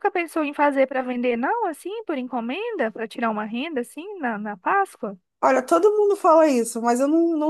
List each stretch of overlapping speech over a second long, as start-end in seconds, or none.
none